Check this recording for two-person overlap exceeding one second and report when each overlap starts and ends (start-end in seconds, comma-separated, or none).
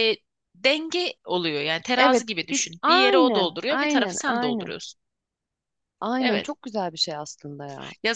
2.0-4.7